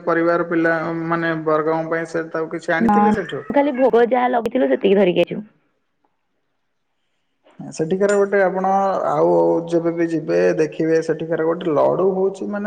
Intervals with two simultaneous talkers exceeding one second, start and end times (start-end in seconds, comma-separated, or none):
none